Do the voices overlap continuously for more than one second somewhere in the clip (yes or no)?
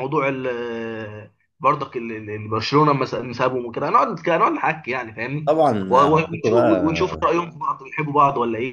yes